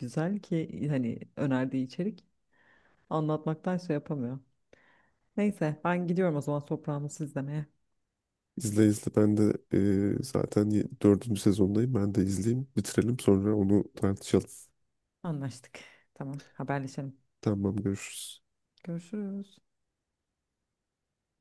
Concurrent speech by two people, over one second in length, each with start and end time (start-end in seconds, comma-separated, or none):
none